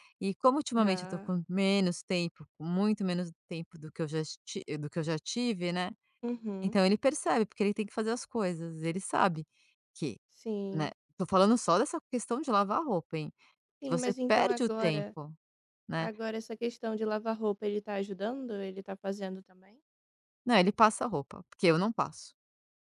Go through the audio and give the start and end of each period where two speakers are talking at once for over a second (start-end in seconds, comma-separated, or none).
13.8-15.2